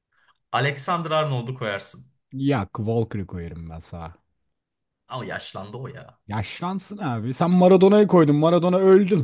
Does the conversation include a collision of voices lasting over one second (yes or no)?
no